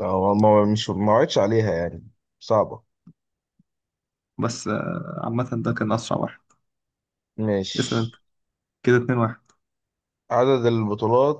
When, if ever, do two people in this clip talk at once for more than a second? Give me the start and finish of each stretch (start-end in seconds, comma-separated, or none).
none